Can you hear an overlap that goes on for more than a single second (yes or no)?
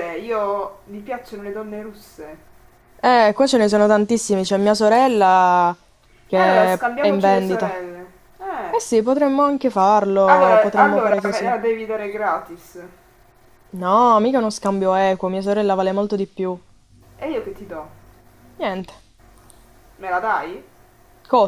yes